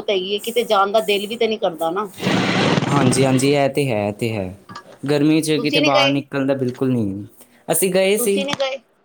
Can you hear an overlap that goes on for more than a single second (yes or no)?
no